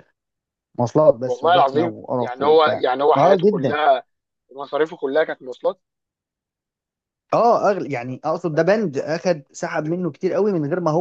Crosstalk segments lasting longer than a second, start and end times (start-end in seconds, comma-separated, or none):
1.2-3.8